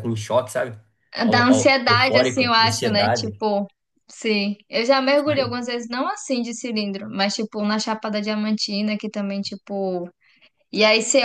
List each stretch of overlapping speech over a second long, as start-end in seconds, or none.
1.3-3.4